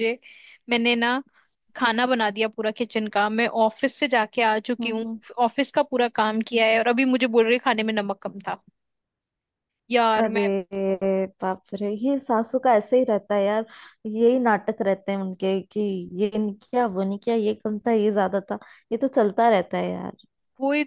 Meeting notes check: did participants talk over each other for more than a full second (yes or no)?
no